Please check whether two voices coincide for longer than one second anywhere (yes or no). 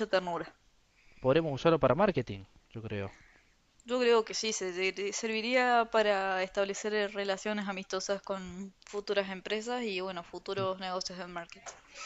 no